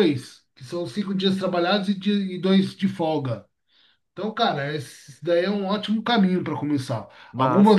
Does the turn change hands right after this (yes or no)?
no